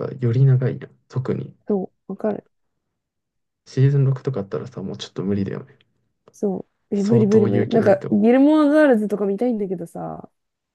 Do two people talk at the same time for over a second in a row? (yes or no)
yes